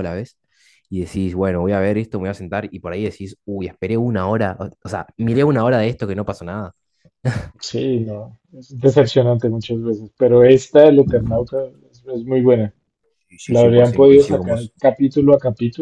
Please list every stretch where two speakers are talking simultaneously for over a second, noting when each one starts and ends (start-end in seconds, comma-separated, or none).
13.5-14.7